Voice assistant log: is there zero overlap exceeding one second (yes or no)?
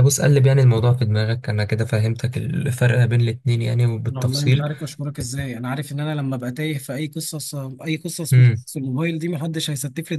yes